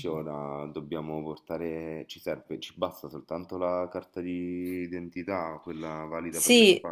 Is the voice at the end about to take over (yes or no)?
yes